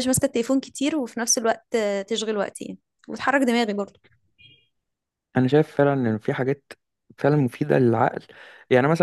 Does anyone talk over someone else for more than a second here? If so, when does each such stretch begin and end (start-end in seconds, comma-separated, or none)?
none